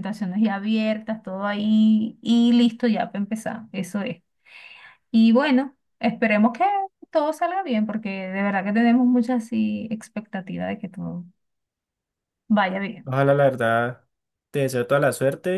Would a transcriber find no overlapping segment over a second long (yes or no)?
yes